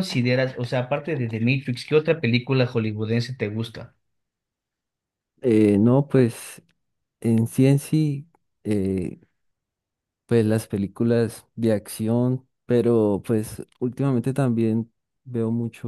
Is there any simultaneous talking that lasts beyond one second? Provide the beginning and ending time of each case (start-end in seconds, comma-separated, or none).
none